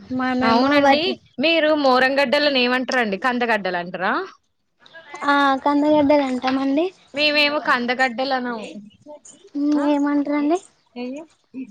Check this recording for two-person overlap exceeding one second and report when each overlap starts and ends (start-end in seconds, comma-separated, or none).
none